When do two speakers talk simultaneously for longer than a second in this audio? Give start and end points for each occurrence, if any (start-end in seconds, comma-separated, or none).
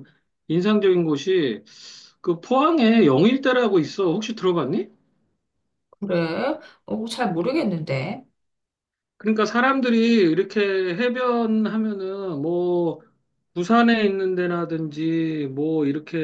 none